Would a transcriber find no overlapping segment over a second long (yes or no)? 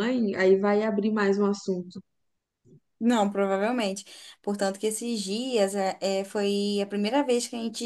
yes